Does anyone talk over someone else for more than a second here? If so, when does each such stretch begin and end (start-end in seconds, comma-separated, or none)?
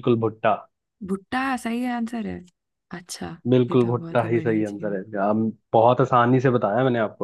3.7-5.0